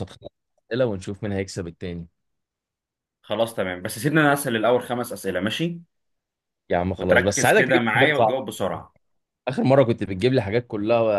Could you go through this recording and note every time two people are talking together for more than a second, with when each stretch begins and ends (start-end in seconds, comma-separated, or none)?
7.0-8.6